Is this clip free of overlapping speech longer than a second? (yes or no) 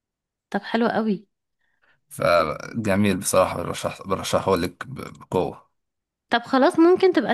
yes